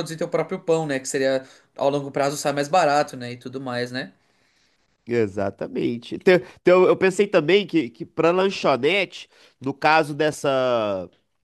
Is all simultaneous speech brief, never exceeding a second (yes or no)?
yes